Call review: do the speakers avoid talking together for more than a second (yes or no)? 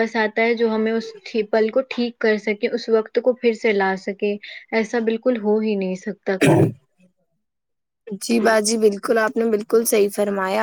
yes